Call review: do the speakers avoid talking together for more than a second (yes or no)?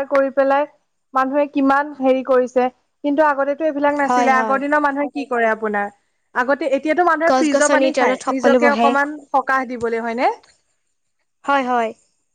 no